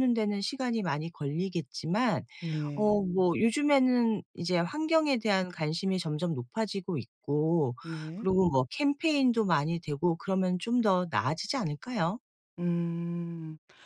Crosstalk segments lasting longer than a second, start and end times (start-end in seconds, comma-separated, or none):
none